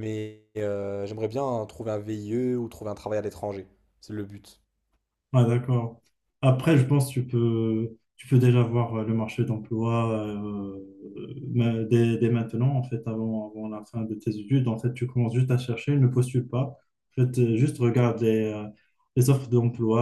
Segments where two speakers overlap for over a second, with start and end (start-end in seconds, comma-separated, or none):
none